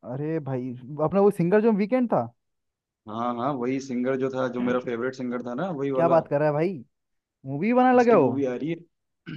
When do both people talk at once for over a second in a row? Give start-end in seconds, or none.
none